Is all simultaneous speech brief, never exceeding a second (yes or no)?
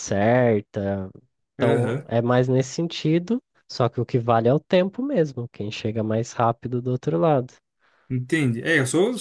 yes